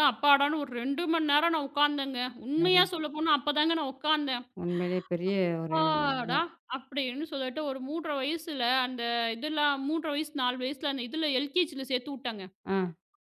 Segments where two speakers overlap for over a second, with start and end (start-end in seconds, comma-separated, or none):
none